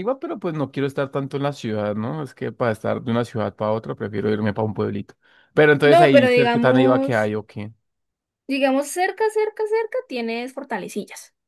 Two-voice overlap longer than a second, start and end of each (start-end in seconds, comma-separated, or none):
5.8-7.3